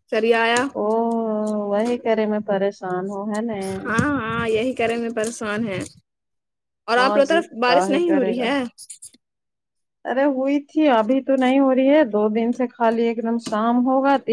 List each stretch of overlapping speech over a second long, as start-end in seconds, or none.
7.0-8.5